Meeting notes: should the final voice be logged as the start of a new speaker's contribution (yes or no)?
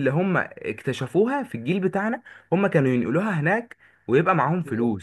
yes